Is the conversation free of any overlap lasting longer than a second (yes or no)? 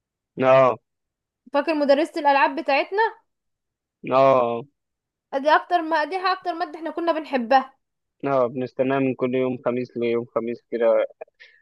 yes